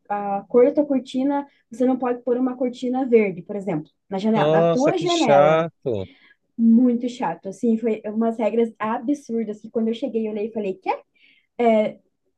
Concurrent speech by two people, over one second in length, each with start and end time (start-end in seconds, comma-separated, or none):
4.3-5.7